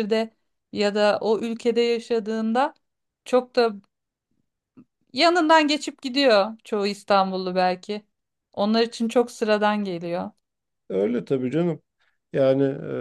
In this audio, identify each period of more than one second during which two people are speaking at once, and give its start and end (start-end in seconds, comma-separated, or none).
none